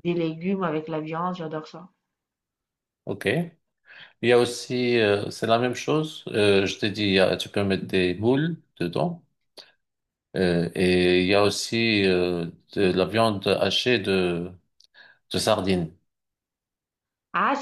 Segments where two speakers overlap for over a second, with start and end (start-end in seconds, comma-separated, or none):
none